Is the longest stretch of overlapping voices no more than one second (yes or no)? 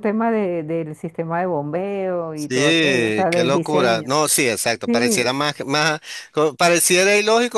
no